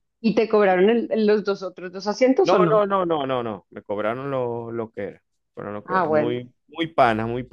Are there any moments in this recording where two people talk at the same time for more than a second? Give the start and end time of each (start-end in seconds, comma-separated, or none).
none